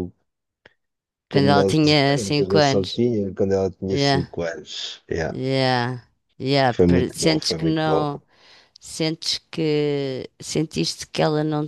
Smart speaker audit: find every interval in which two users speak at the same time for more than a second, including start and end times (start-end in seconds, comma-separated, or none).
1.3-3.0, 6.7-8.1